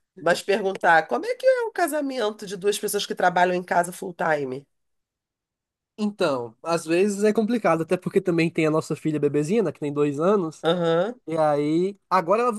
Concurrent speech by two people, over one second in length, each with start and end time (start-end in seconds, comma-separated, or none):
none